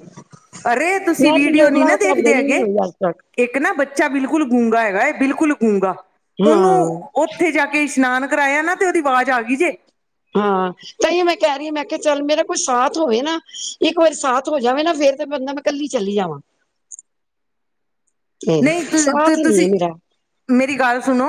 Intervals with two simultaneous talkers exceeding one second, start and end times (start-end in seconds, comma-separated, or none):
1.2-2.6